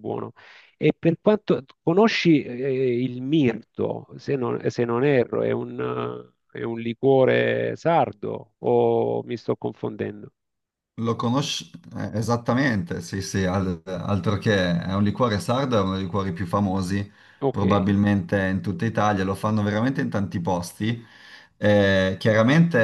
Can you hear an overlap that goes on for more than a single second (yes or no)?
no